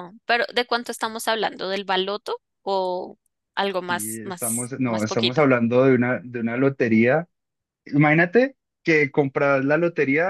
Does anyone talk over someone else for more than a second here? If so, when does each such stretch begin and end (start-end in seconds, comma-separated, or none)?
3.9-5.4